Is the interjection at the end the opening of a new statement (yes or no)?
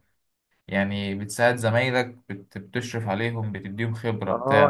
yes